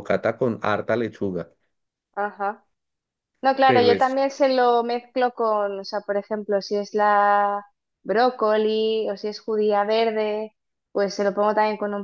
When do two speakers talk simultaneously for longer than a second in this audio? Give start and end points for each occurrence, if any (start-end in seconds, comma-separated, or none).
none